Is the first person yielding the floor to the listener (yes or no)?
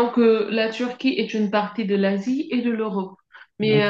no